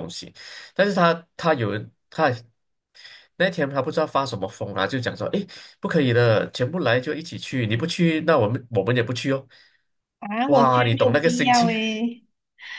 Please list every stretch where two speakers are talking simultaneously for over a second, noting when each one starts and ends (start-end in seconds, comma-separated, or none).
10.4-11.7